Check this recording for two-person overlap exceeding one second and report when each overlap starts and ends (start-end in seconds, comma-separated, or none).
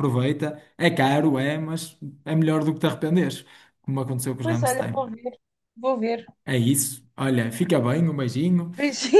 none